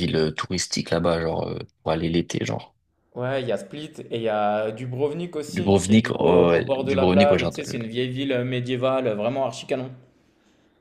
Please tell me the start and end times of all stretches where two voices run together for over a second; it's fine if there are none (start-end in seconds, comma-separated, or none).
5.6-7.8